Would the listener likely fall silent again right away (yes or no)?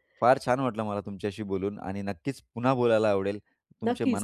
no